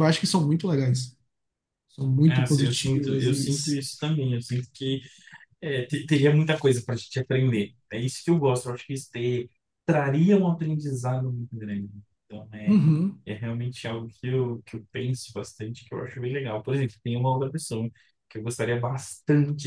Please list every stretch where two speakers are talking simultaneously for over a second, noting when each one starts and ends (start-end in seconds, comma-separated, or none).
2.2-3.5